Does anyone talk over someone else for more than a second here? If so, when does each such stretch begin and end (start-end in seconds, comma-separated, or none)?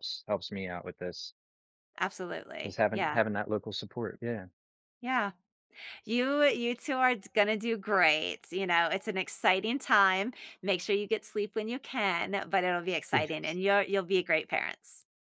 none